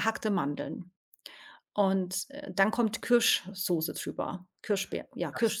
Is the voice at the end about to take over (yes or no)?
yes